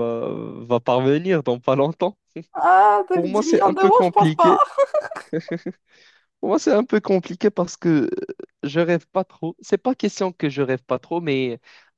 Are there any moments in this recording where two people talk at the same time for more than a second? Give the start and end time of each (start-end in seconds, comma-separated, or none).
3.1-4.6